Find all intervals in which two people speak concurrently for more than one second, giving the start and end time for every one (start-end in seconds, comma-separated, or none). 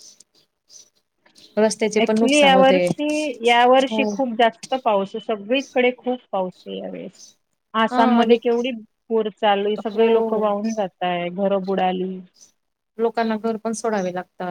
none